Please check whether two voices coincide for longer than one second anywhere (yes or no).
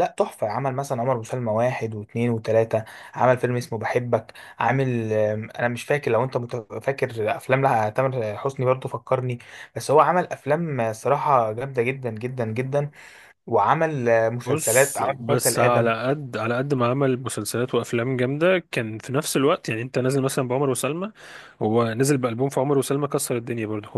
yes